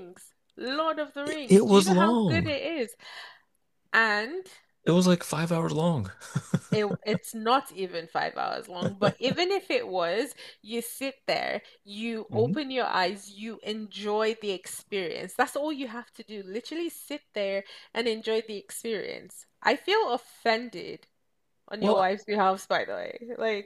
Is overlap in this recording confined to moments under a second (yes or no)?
no